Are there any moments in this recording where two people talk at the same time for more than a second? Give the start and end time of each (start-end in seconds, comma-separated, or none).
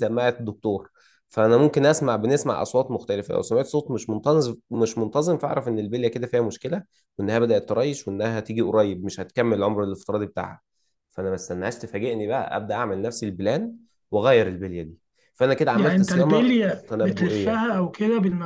15.7-17.7